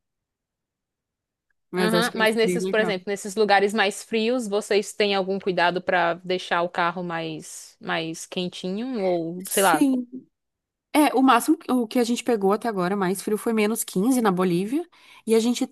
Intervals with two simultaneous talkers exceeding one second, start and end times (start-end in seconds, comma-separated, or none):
1.8-3.0